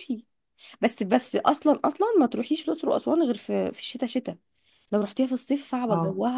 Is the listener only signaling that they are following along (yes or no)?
yes